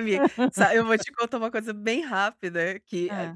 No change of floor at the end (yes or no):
yes